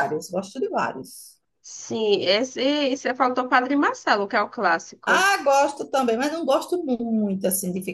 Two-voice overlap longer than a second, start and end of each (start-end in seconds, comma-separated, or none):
none